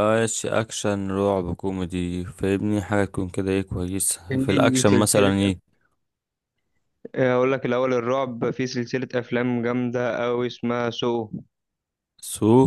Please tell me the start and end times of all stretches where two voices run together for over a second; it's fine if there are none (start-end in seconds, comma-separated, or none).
4.3-5.5